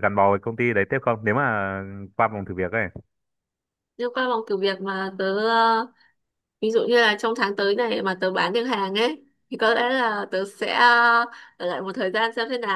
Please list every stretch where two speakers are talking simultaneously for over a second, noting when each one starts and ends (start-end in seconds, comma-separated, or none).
none